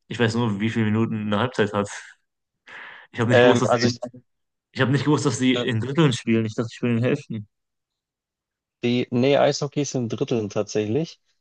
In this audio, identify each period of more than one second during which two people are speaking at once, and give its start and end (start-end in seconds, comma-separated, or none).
none